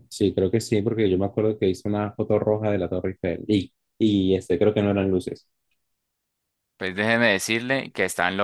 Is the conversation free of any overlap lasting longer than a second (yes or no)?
yes